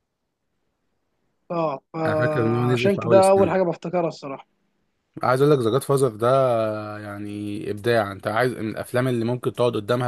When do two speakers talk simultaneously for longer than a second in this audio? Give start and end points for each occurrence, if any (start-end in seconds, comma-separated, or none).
2.1-3.5